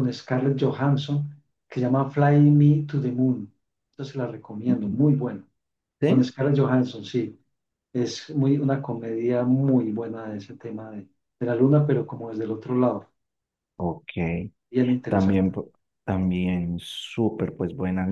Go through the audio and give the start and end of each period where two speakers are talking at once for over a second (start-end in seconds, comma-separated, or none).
none